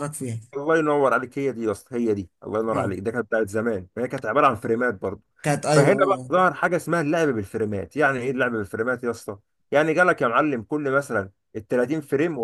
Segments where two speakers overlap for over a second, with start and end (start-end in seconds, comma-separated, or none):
none